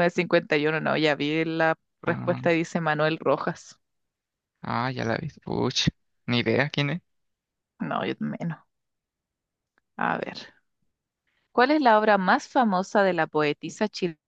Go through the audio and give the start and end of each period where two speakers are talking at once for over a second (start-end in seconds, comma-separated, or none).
none